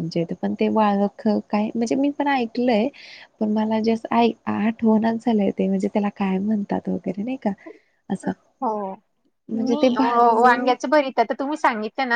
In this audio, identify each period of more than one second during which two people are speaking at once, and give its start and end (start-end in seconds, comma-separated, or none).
none